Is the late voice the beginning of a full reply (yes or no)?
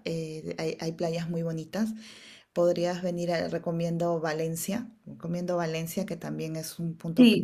yes